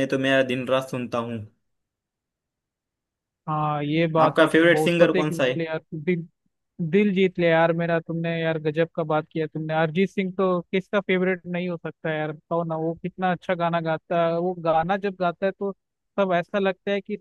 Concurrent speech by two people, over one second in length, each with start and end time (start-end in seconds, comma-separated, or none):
4.3-5.5